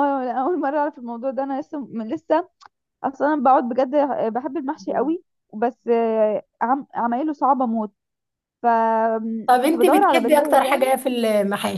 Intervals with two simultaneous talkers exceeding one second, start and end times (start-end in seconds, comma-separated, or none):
9.5-10.8